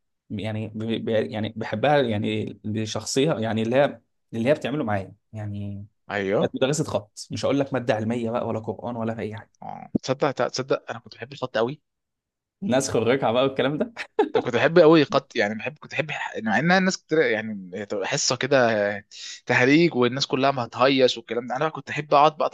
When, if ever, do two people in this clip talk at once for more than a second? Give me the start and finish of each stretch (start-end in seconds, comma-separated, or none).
none